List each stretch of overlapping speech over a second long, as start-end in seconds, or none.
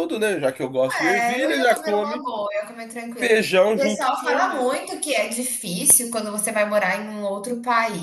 0.9-2.3, 3.2-4.8